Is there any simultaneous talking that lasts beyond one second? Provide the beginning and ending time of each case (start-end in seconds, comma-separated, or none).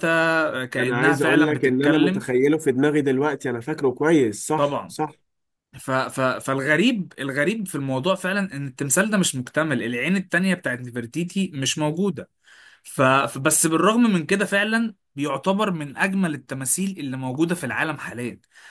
0.8-2.3